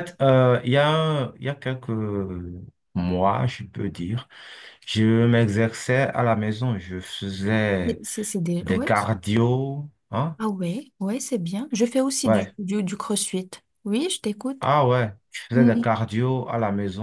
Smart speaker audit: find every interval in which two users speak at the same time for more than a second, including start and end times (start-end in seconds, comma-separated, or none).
none